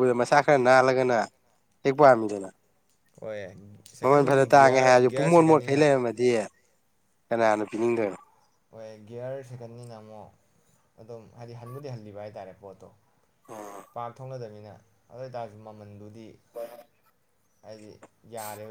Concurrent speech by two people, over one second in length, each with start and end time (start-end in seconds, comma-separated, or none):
4.0-5.8